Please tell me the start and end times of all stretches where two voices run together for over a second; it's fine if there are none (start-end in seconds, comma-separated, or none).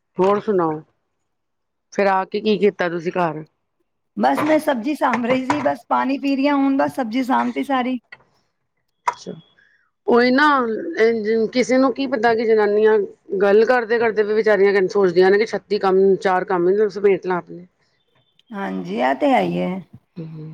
none